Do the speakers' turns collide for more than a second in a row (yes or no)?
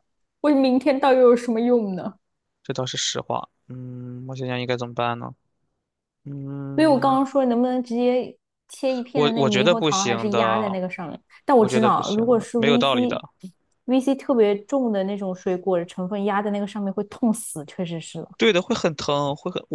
yes